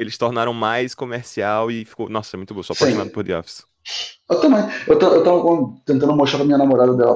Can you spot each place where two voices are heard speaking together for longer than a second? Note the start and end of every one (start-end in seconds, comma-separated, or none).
none